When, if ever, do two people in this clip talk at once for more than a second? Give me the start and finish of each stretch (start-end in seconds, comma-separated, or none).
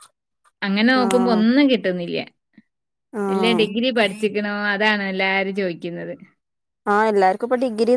none